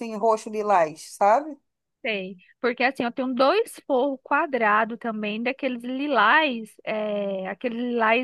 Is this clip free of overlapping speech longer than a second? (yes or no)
yes